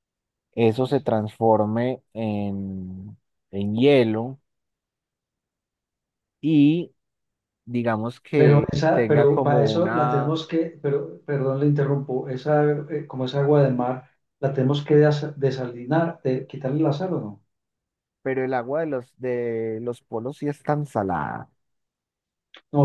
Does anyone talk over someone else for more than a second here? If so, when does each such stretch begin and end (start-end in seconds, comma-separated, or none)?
8.3-10.3